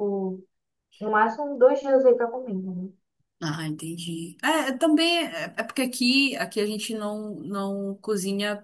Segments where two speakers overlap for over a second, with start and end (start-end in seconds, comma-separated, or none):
none